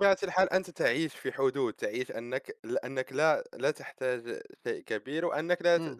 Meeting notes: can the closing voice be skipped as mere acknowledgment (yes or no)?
yes